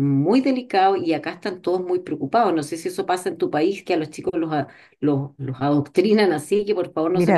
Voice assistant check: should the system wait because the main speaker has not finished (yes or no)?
no